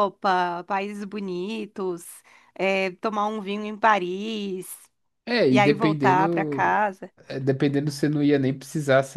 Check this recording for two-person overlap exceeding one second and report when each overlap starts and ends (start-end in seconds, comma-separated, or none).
5.5-6.8